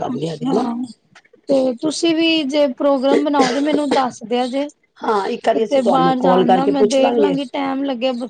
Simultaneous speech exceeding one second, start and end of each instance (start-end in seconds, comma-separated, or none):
5.5-7.3